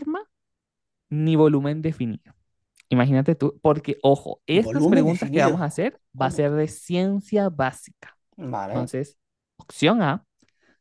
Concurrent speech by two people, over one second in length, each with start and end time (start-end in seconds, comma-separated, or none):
4.5-6.5